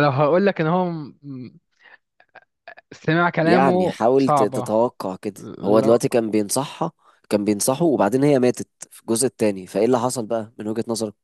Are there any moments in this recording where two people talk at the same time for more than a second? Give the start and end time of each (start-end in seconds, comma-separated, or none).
3.4-4.7